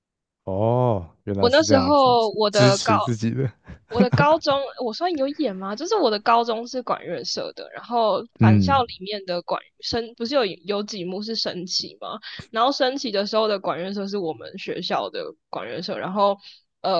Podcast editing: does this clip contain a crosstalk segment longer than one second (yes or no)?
yes